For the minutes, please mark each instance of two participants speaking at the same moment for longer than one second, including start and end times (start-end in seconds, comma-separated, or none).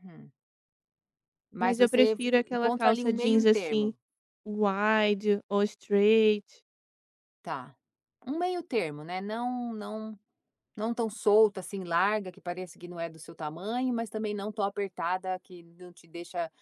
1.6-3.9